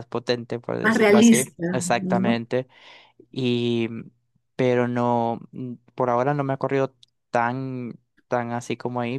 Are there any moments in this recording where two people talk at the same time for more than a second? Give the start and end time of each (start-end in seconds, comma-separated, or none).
0.8-2.4